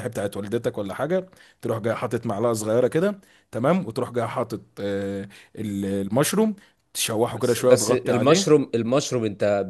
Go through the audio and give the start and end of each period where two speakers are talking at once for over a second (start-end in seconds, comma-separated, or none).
7.3-8.7